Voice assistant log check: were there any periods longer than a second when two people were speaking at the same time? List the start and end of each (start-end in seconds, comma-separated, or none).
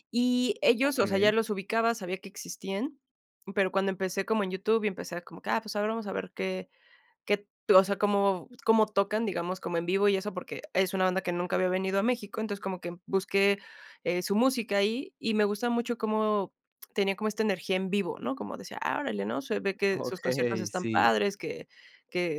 19.9-21.1